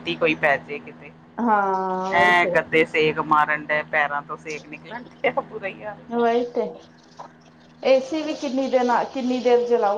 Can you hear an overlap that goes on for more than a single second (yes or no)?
no